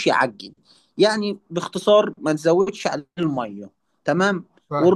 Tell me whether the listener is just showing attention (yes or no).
yes